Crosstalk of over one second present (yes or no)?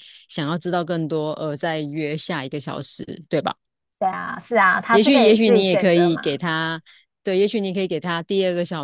yes